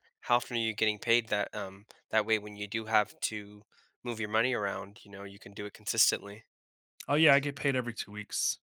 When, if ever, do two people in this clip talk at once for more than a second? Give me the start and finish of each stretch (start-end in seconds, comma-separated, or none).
none